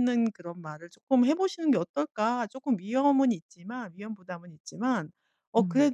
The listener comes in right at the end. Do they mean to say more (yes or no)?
no